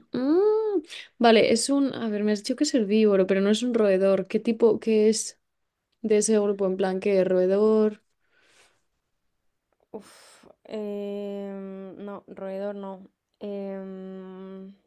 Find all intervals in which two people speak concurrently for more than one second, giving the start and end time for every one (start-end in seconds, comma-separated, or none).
none